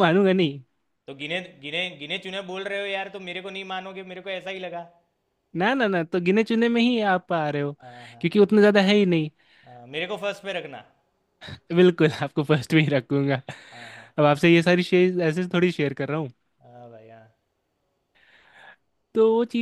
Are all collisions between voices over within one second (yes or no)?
yes